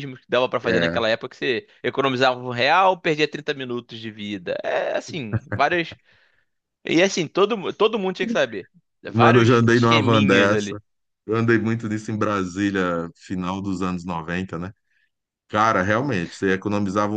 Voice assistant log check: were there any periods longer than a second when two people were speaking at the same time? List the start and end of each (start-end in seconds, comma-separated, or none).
9.0-10.8